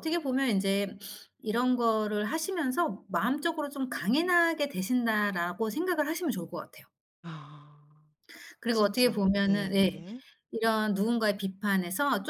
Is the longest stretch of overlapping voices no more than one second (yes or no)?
no